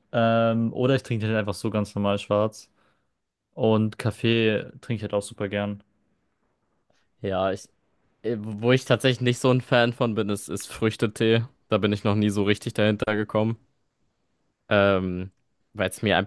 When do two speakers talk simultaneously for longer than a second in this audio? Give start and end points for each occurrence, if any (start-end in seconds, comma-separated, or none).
none